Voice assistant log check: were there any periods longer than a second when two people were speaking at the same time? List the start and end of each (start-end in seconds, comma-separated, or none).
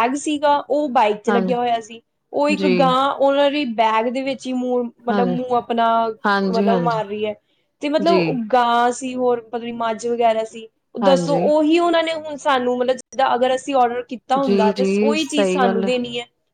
14.4-15.9